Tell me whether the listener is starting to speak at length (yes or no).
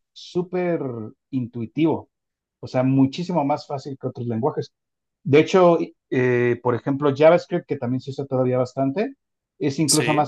no